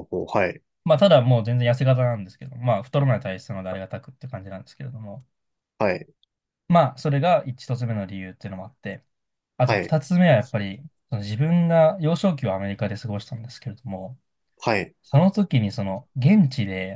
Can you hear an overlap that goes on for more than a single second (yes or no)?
no